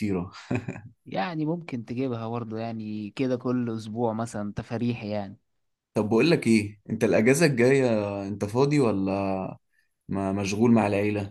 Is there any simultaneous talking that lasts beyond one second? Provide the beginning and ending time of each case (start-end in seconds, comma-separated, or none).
none